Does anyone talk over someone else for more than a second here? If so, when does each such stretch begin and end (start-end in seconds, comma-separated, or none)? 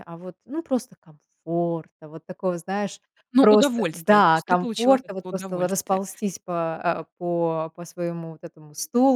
3.4-6.0